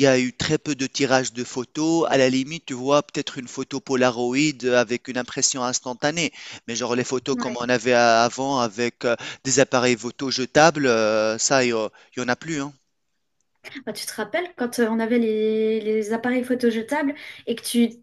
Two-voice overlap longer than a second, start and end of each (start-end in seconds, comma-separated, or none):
none